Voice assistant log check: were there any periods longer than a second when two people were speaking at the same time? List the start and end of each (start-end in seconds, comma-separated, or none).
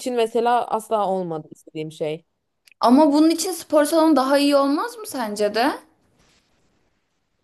none